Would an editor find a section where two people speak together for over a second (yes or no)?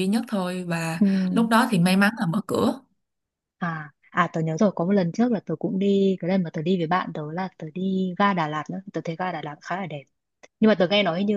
no